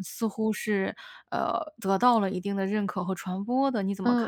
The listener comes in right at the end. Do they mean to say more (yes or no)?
yes